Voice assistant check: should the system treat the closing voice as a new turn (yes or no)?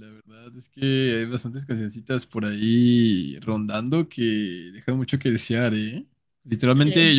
no